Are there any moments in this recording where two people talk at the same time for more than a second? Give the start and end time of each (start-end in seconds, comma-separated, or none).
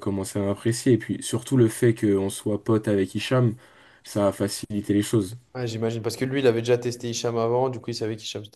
none